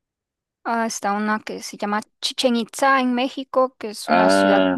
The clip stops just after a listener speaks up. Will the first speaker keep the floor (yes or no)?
no